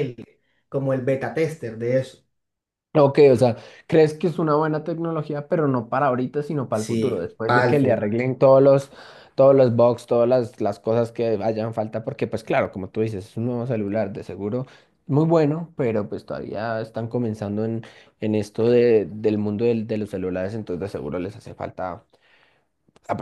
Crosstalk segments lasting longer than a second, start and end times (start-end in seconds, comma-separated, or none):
6.7-8.1